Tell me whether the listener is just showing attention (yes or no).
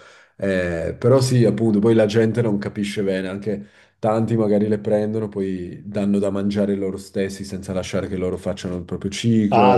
no